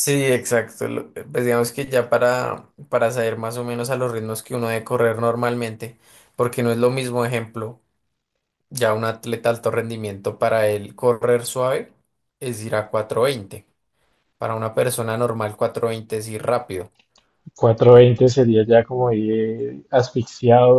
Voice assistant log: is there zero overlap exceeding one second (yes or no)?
yes